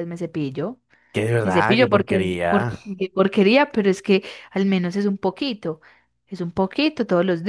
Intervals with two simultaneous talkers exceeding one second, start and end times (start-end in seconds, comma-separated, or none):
1.4-2.8